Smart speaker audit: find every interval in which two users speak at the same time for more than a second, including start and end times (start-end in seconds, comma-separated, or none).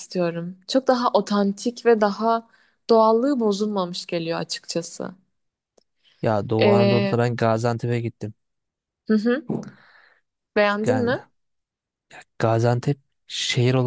none